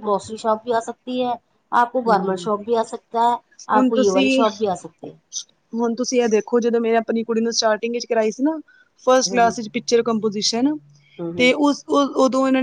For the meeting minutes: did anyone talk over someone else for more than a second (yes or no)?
no